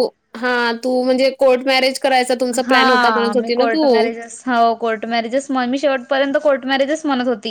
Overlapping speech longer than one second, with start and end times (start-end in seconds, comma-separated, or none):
none